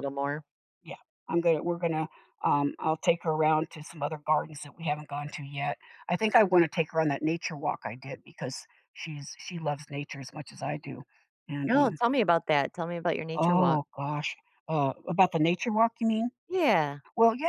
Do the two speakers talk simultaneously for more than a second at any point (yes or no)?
no